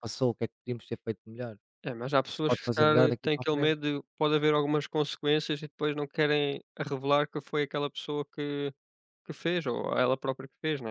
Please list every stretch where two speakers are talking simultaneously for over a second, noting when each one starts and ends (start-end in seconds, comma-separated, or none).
2.2-3.8